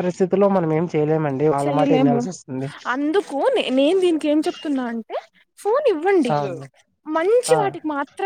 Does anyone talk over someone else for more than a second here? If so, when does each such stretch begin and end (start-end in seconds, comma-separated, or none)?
none